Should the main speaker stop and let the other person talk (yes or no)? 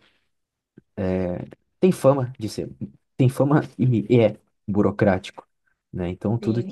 yes